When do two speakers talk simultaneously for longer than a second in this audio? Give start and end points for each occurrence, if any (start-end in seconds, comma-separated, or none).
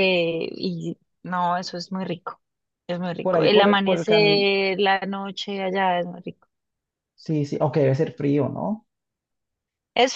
3.2-4.4